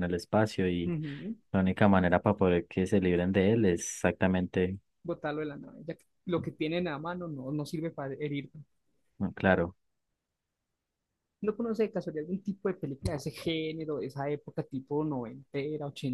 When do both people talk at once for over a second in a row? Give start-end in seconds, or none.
none